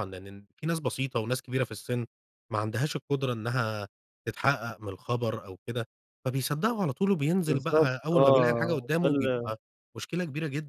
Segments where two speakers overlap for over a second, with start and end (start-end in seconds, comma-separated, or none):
7.5-9.5